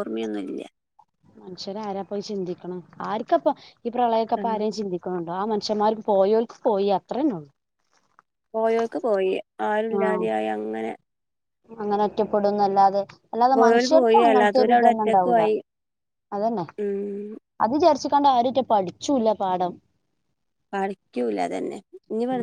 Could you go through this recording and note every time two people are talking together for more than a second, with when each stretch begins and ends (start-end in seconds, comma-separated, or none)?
13.6-15.4